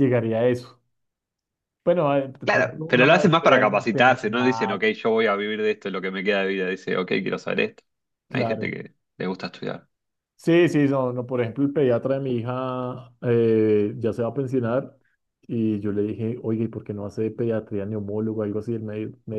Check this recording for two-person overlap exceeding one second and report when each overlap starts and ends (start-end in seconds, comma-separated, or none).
2.4-4.8